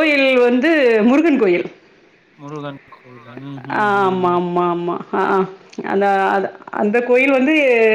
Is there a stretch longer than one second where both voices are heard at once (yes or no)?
no